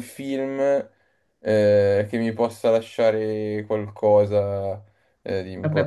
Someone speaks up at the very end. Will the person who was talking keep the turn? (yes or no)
no